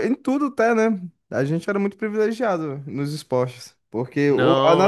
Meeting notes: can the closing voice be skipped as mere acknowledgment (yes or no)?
yes